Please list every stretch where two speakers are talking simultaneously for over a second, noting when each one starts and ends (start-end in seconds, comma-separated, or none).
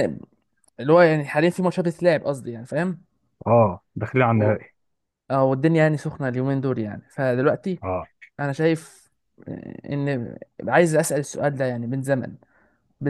none